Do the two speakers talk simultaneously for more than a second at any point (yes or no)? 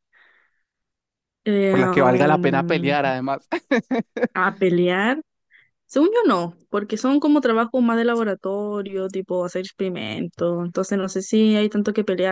yes